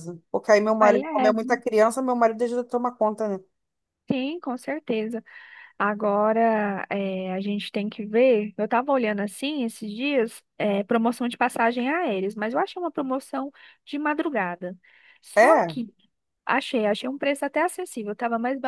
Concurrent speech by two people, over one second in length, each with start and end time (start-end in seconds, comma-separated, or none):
none